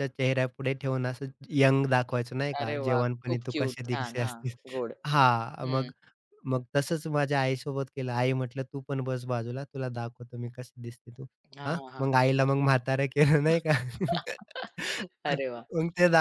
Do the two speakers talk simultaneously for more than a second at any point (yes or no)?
yes